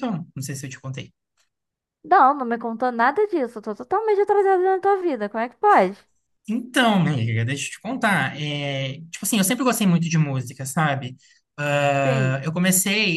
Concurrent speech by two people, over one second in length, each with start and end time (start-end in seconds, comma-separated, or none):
none